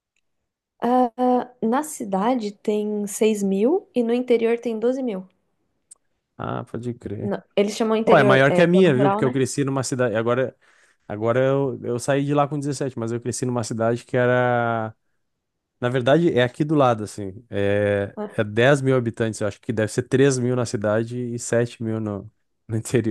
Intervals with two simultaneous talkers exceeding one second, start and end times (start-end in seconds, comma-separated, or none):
8.0-9.4